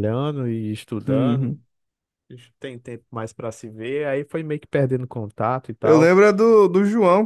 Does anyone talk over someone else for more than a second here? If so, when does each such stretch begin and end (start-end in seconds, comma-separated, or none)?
none